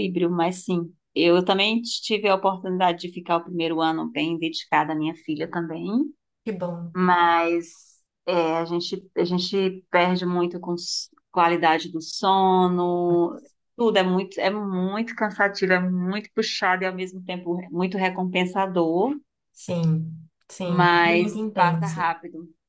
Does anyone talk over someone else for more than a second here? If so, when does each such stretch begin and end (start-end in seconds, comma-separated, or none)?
20.6-22.1